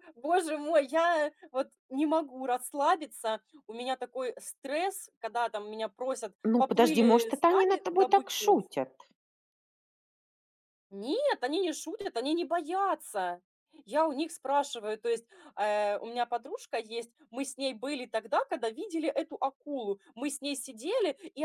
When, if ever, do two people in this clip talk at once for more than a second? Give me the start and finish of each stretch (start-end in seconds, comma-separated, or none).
6.4-8.6